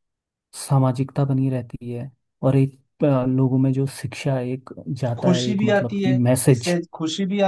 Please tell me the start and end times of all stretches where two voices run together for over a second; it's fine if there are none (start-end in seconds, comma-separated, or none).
5.2-6.8